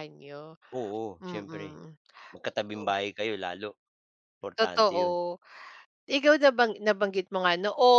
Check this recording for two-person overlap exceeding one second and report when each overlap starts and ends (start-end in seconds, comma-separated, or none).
none